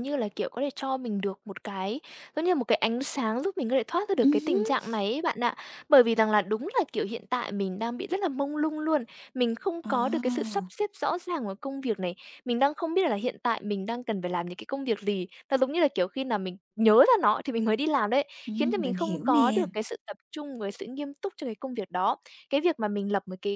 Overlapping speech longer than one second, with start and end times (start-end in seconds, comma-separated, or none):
18.5-19.7